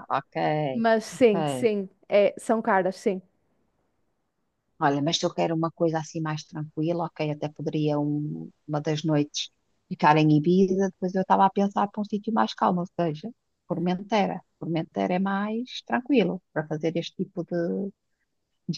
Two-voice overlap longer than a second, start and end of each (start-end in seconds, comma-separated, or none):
none